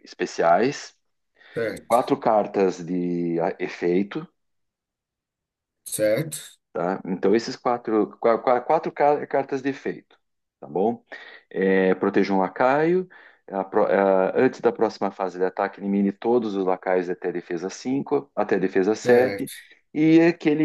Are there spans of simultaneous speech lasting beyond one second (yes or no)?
no